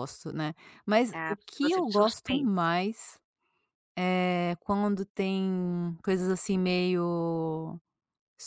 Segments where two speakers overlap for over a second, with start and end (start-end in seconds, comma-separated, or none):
1.1-2.7